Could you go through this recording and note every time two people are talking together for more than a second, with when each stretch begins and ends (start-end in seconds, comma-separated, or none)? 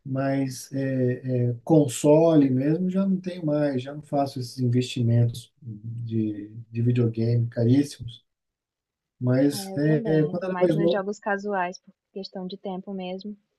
9.5-11.0